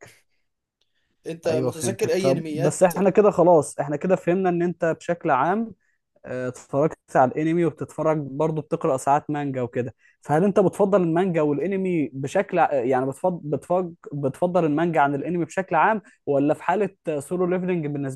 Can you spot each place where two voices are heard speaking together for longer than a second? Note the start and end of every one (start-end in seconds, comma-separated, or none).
1.5-2.9